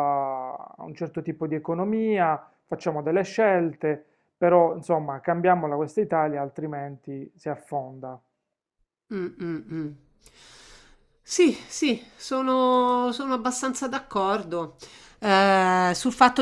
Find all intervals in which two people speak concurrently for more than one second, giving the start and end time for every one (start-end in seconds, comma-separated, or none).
none